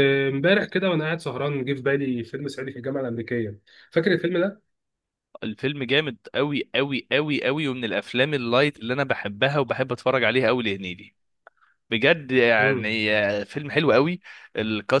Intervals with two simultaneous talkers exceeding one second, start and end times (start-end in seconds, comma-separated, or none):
none